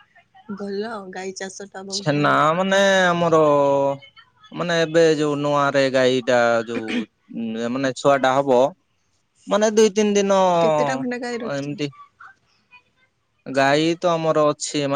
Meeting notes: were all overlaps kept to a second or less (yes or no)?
no